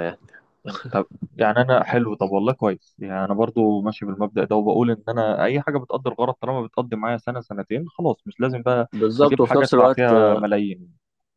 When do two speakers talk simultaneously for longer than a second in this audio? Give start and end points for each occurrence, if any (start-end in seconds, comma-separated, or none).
8.9-10.4